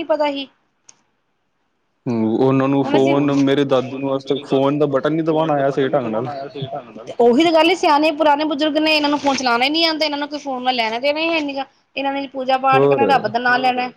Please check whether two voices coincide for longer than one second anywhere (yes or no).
no